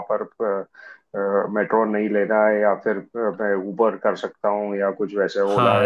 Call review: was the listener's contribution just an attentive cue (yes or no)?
no